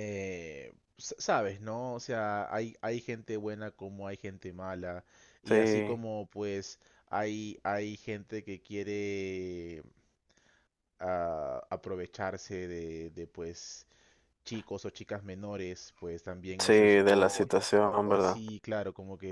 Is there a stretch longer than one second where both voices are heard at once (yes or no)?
yes